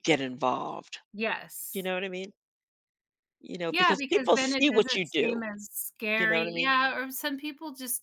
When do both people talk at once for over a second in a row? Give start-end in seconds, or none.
3.7-5.4